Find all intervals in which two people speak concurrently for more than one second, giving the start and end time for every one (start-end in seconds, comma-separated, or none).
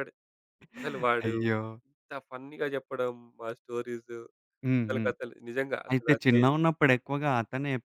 none